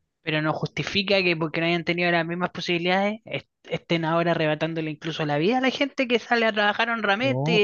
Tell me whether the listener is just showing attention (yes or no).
yes